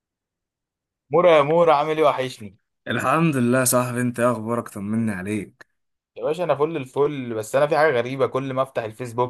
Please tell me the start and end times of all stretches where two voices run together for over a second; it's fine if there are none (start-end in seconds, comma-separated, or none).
none